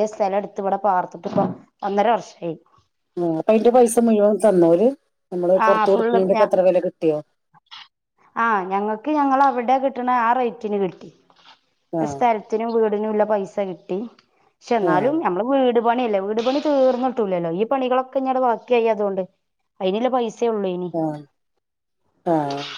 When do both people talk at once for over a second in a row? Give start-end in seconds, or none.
none